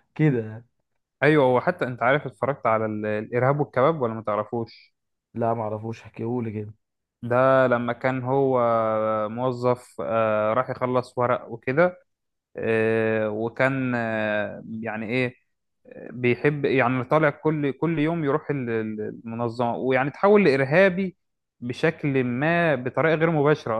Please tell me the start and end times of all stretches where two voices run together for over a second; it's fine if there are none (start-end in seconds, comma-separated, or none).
none